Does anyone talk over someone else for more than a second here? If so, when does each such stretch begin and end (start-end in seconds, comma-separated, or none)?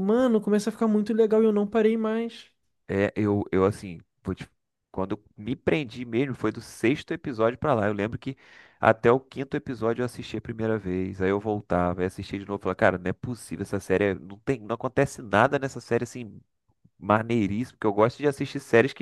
none